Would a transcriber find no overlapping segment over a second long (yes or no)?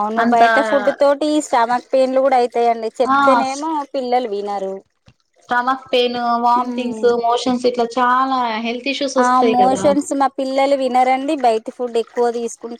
yes